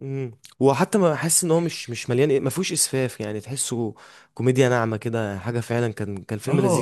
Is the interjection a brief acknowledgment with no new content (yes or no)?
no